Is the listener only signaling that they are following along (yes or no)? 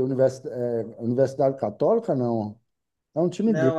no